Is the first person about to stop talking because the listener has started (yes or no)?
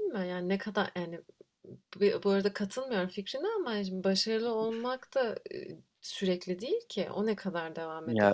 no